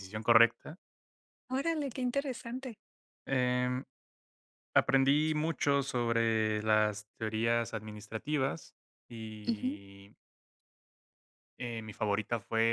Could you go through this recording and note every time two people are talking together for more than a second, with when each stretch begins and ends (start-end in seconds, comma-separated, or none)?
none